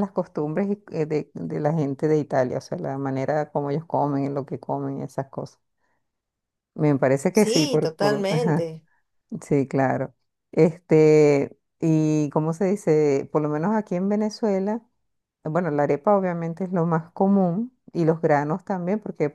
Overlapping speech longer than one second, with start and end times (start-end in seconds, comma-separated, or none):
7.3-8.7